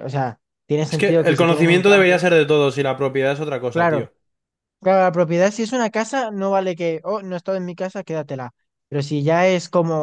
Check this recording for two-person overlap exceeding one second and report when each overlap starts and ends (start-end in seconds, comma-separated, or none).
0.9-2.2